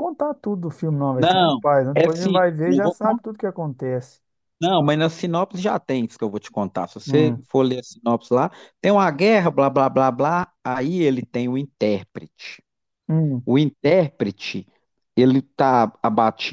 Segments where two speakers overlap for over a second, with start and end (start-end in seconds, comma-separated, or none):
1.1-3.2